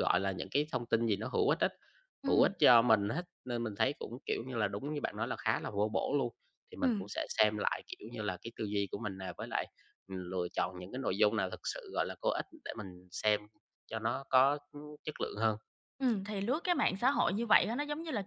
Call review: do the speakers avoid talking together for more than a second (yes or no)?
yes